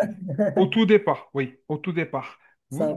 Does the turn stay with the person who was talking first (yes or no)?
yes